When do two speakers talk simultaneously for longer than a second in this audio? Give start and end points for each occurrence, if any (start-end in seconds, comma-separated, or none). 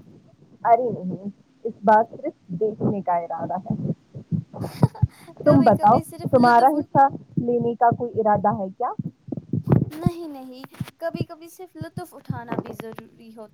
5.4-7.0